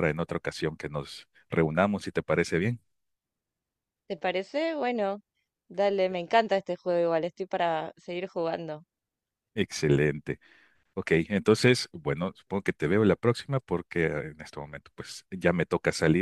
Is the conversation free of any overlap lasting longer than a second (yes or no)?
yes